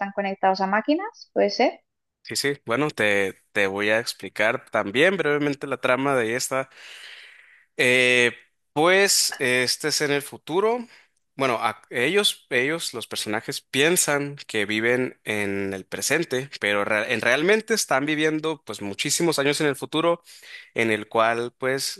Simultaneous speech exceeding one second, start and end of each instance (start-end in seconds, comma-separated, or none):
none